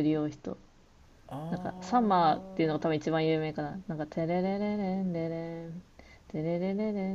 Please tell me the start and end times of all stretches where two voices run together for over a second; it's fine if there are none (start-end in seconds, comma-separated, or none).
1.5-2.8